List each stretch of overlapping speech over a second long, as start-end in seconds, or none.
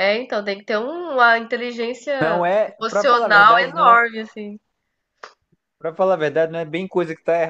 2.2-4.0